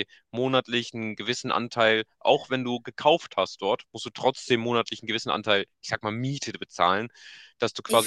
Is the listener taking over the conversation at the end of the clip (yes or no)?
no